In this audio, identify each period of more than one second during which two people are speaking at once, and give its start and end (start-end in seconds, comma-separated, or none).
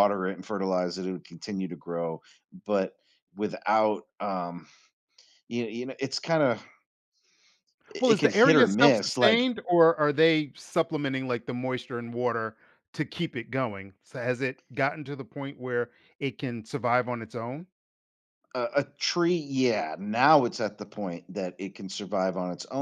8.0-9.5